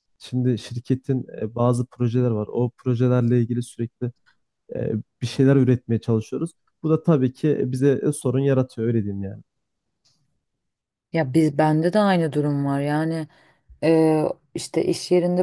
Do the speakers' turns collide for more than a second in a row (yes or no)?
no